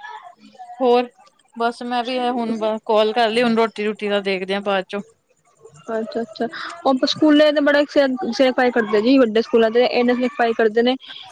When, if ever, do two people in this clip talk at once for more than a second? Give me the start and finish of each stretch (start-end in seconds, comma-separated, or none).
none